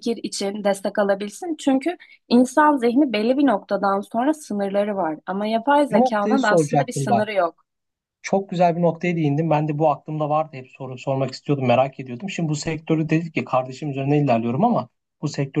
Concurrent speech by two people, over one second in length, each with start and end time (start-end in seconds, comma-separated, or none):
5.9-7.3